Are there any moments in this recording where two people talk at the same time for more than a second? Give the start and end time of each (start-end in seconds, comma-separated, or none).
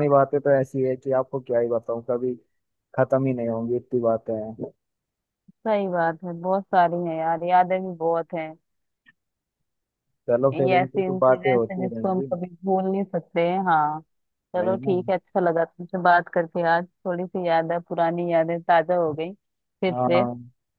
10.5-12.3